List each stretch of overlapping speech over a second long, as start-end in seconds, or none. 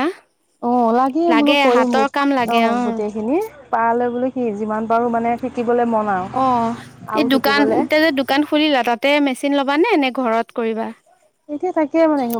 none